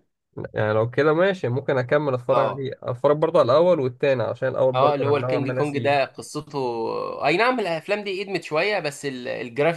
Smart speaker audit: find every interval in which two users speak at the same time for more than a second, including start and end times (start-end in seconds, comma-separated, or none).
4.7-6.1